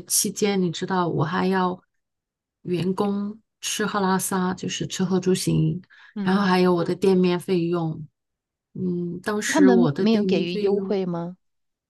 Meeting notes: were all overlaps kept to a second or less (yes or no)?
no